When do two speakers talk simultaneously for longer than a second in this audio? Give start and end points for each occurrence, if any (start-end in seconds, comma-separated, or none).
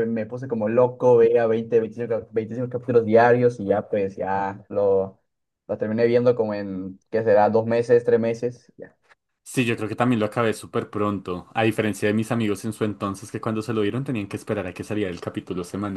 none